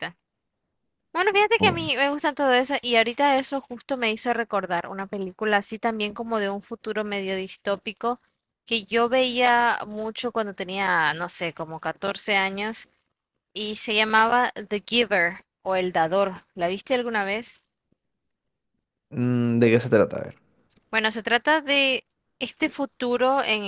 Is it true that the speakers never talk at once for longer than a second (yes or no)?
yes